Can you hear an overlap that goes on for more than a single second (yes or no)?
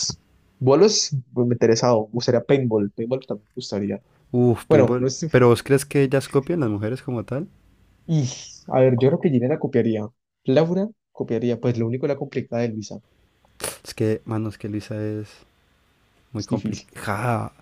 no